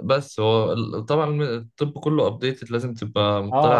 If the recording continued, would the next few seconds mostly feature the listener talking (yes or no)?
yes